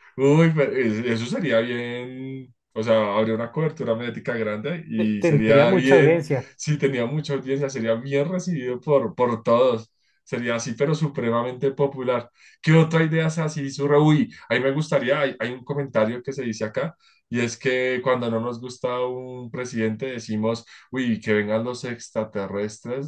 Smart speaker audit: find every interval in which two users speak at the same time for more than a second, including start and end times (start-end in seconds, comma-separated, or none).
5.0-6.5